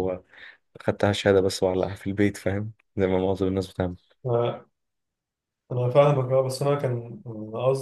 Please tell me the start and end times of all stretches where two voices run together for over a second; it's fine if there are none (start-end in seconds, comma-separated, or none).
none